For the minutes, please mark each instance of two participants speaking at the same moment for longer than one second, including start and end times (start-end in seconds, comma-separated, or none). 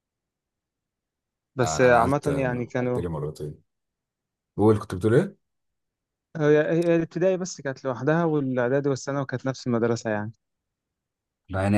1.6-3.0